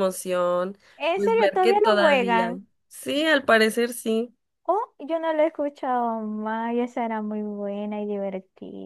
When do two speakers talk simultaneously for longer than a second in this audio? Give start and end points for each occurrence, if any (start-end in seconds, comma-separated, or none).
1.1-2.6